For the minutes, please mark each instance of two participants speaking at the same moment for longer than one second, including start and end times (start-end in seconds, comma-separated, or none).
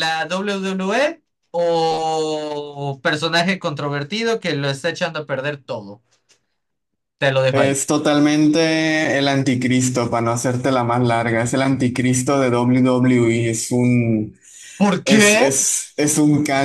none